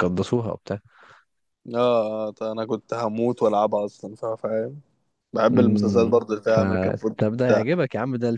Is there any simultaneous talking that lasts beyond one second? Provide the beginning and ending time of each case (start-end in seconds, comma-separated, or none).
5.5-7.2